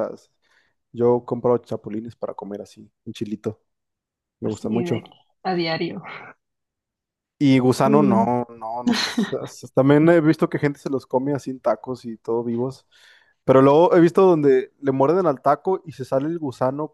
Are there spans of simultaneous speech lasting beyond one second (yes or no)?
no